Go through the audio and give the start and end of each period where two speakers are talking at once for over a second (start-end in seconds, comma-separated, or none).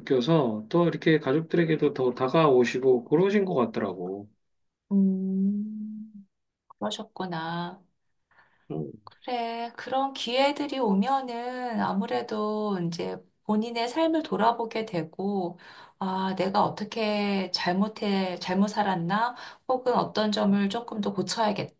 none